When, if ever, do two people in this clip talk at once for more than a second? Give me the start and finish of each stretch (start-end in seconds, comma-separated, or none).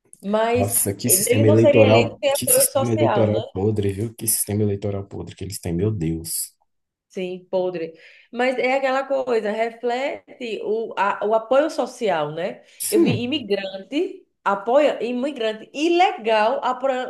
0.5-3.4